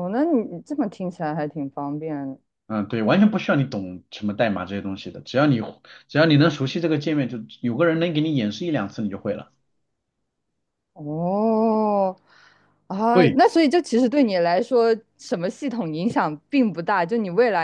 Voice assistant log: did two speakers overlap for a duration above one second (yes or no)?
no